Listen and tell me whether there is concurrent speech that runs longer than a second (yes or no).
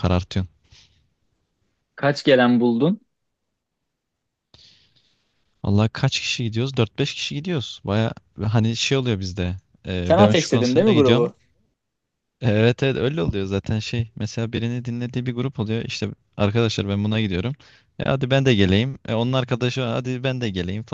yes